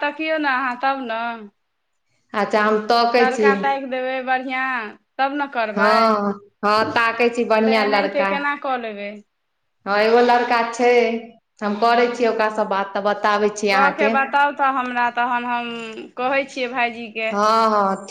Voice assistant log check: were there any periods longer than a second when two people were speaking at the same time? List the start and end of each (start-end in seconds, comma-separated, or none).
5.7-8.3